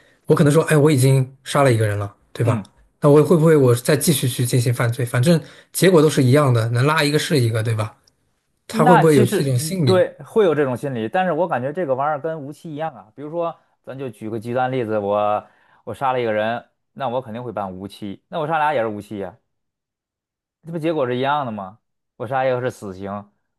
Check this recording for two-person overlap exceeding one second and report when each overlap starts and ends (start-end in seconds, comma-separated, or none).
8.7-10.1